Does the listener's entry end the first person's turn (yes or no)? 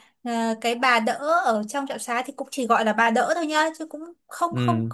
no